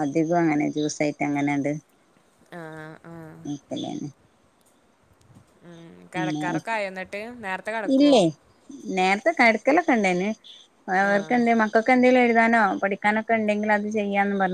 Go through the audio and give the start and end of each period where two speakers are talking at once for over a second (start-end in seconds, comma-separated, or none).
none